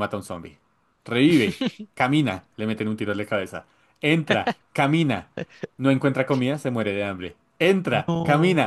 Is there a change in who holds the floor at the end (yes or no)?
no